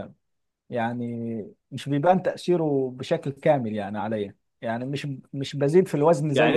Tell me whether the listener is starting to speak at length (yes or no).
yes